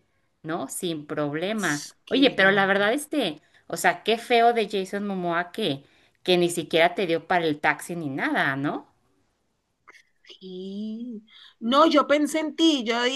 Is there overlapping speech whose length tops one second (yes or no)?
yes